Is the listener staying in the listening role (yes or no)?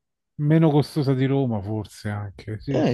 no